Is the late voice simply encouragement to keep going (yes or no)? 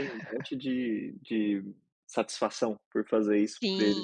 no